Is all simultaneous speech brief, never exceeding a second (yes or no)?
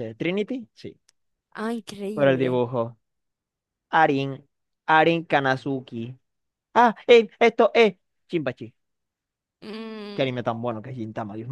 yes